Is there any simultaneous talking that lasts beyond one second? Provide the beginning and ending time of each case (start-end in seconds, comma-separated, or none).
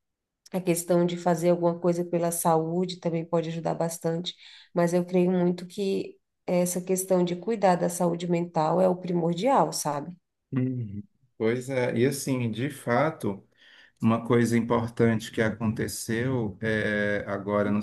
none